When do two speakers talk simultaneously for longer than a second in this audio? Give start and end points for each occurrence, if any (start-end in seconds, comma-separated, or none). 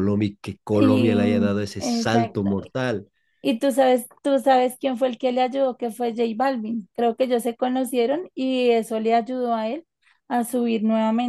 0.7-2.5